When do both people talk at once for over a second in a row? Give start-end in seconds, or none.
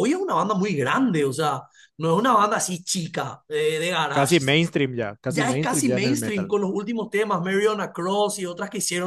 5.3-6.5